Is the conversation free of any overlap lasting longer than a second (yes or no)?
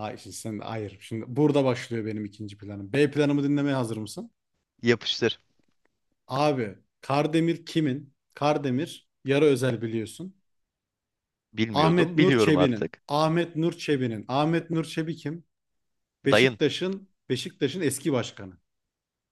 no